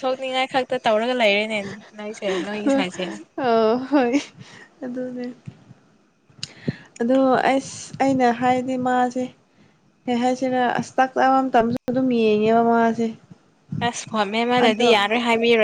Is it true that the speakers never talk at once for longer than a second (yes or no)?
yes